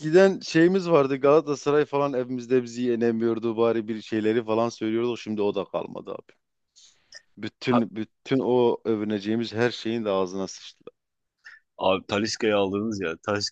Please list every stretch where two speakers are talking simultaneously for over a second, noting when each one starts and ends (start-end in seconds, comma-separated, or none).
none